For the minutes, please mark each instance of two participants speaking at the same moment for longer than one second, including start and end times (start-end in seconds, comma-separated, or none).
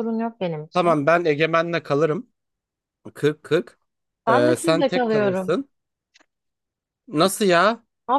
4.3-5.6